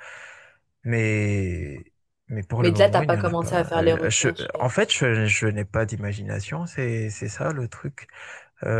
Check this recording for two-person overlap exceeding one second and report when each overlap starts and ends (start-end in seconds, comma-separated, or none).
2.6-4.7